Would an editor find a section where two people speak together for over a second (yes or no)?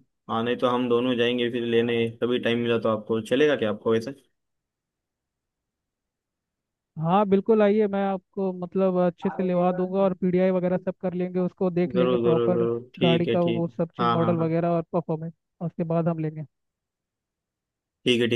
yes